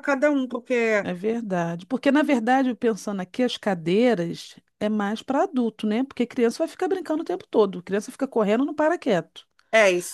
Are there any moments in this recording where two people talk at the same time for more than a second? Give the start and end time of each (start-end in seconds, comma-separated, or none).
none